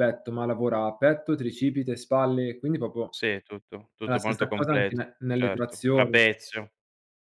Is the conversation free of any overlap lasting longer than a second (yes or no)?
no